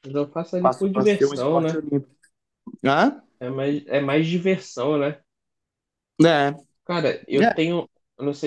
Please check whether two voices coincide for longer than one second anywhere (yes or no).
yes